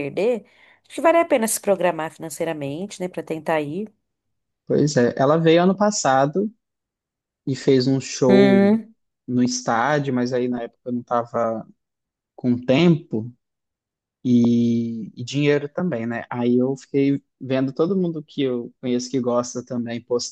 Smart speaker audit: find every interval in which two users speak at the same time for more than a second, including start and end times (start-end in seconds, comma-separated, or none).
none